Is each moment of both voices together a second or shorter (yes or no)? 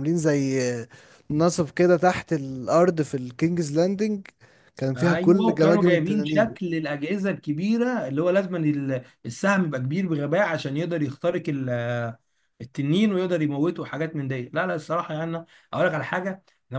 no